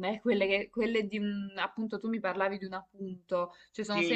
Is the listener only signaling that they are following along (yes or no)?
no